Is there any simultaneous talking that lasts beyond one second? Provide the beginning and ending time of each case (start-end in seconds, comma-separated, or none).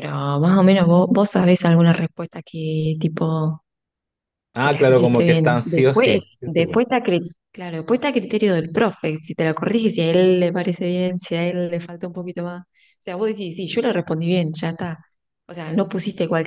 4.6-6.8